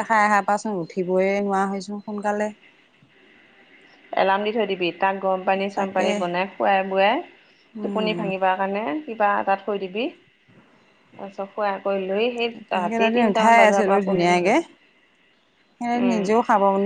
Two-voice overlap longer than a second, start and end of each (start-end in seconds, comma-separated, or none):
12.7-14.5